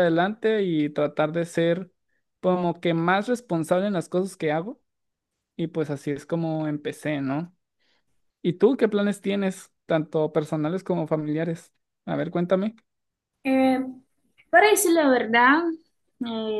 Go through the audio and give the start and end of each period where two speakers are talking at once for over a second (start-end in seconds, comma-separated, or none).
none